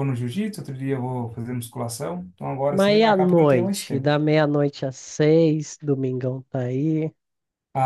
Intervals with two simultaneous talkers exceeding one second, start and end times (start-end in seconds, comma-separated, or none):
2.7-4.2